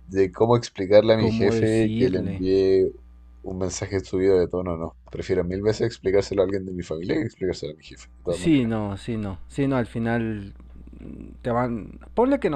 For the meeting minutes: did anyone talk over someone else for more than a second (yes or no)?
yes